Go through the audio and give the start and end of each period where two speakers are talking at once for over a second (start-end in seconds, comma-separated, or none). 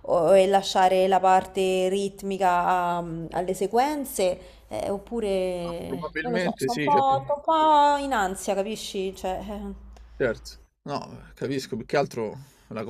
5.7-7.2